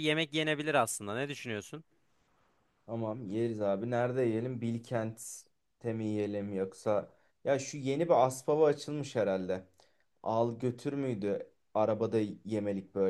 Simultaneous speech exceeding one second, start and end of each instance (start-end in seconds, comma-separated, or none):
none